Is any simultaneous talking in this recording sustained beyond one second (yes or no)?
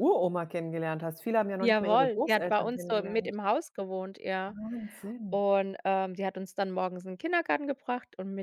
yes